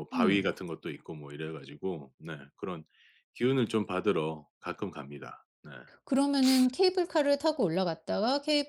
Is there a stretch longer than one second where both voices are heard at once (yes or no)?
no